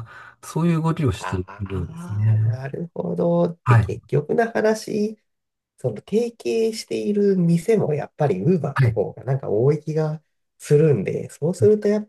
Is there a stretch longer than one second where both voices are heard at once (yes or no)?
yes